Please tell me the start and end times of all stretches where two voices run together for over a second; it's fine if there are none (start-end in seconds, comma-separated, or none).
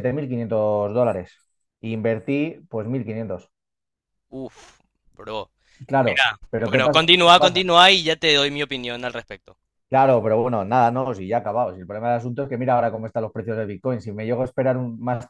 6.0-7.6